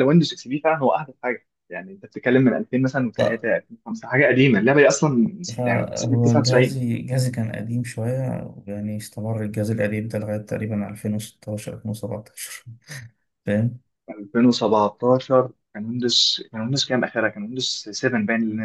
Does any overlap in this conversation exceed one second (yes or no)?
yes